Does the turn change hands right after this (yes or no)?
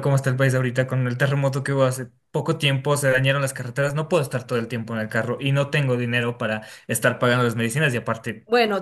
yes